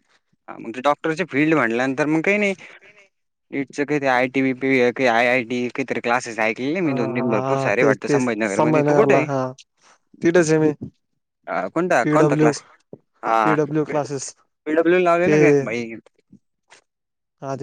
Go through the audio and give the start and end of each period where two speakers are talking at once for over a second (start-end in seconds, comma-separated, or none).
6.8-9.2